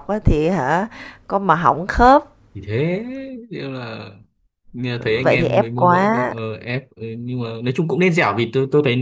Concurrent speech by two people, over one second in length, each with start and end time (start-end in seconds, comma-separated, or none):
5.0-6.3